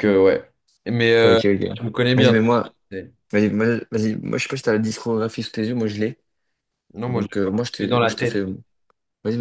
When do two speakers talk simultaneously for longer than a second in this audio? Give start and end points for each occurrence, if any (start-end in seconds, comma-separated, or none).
7.1-8.4